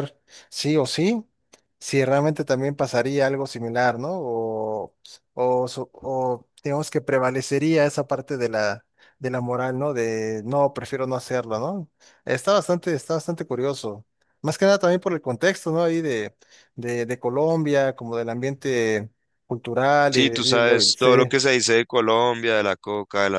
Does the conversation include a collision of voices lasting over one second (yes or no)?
yes